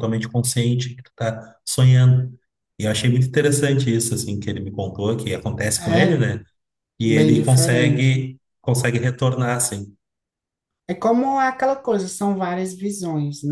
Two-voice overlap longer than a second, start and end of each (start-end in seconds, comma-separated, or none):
7.0-8.3